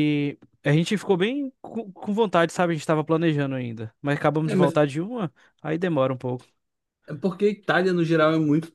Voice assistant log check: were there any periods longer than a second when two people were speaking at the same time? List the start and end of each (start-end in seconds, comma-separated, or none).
none